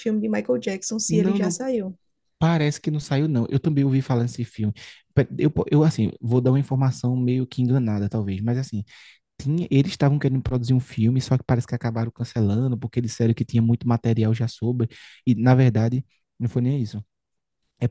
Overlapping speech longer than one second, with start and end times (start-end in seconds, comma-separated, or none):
none